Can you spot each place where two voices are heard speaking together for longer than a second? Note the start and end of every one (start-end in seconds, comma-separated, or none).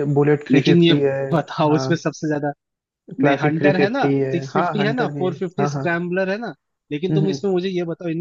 3.2-5.9